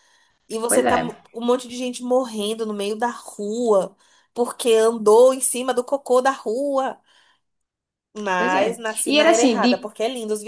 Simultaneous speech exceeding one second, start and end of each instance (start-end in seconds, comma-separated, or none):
8.4-9.9